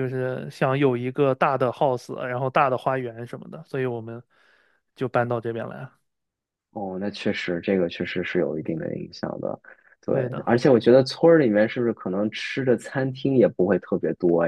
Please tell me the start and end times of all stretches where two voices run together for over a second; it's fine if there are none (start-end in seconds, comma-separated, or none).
none